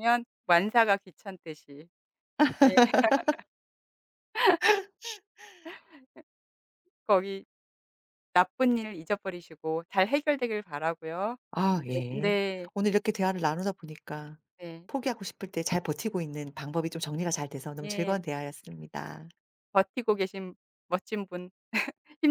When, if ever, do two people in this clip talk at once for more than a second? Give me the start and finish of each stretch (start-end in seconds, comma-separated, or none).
none